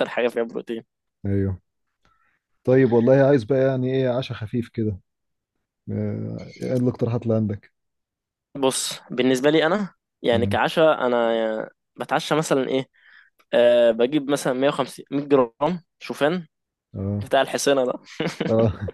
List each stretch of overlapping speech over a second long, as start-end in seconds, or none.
none